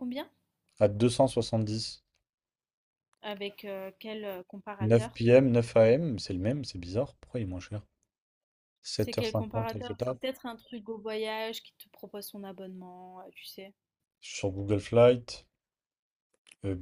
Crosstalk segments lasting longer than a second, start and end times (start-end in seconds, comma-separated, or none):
9.0-10.2